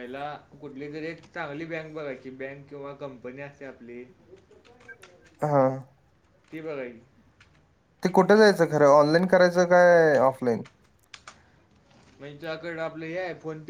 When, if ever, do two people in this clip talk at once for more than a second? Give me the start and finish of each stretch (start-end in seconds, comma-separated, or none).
none